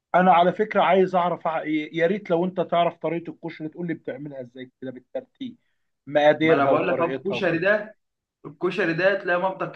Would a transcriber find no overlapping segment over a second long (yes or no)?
no